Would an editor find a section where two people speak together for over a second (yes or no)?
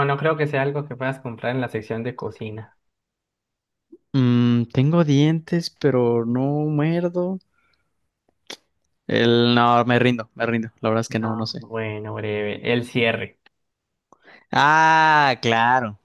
no